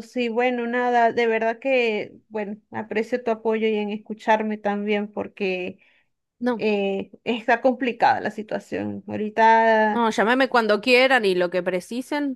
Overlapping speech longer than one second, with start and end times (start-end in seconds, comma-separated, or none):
none